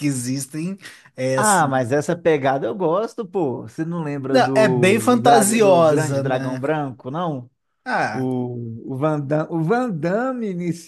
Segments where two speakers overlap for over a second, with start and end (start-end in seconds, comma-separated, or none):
4.3-6.6